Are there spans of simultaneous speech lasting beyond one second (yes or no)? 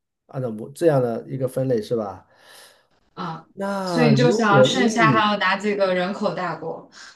yes